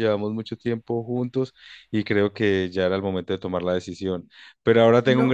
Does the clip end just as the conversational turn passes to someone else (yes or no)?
no